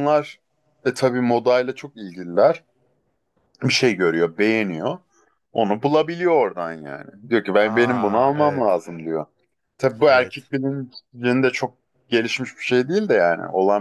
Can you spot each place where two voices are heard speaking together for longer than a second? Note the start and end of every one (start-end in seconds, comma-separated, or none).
7.6-8.8